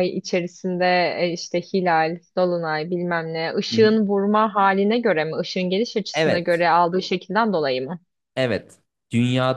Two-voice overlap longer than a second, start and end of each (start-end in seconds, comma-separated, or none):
none